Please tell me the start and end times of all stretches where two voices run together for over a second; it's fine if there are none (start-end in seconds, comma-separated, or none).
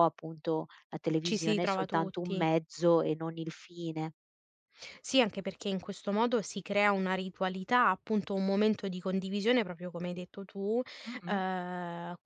1.2-2.5